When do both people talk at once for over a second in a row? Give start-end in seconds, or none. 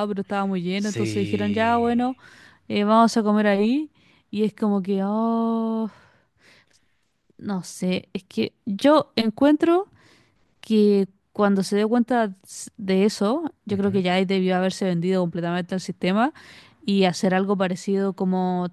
0.7-2.0